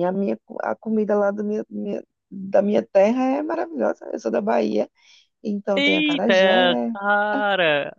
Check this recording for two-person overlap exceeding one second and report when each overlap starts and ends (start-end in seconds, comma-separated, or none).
none